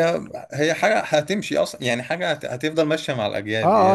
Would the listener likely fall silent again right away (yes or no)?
no